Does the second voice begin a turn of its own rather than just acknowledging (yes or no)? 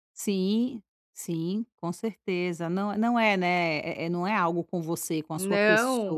yes